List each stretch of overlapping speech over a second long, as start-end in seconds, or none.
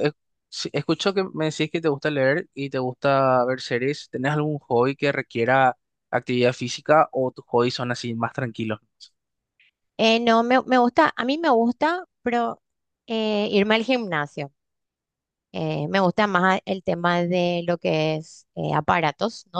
none